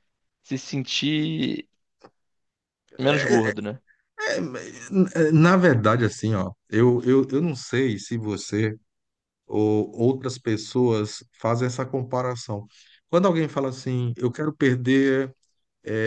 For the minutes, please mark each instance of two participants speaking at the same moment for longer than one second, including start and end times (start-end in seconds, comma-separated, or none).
none